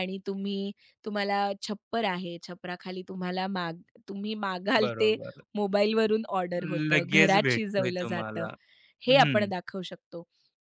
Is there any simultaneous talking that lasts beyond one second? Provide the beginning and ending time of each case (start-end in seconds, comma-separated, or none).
6.9-8.5